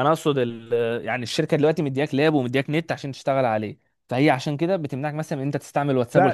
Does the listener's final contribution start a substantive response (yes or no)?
yes